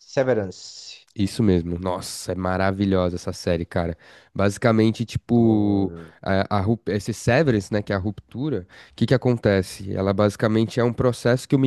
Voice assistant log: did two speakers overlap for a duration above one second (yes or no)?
yes